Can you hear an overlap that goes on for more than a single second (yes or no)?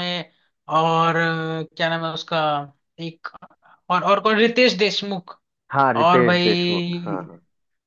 yes